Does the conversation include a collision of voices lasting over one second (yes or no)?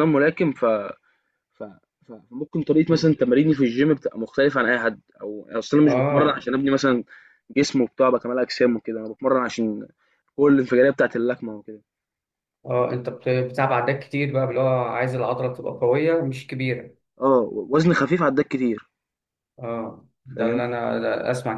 no